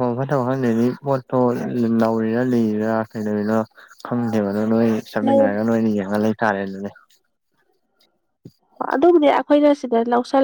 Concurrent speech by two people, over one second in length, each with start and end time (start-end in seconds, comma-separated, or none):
none